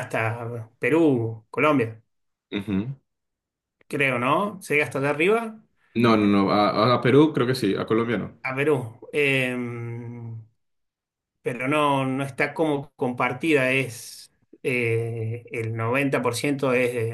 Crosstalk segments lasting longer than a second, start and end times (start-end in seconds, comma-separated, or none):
none